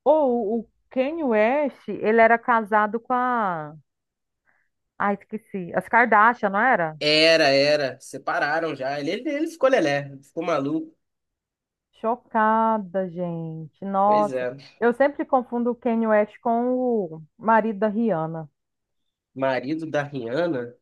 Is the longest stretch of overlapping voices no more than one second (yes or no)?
yes